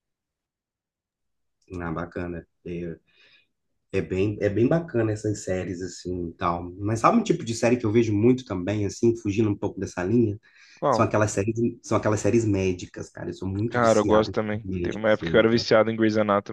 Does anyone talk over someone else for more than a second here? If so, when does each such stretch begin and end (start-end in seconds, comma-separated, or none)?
13.7-15.7